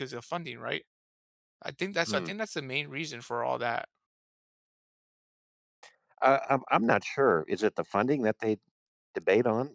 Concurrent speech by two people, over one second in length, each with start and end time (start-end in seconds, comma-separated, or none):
none